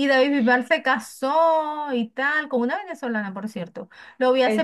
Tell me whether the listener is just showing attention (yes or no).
yes